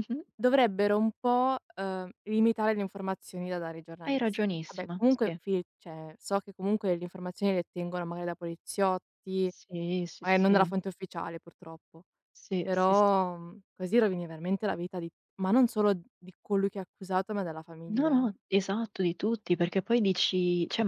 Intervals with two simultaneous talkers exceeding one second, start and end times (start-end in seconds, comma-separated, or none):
4.1-5.4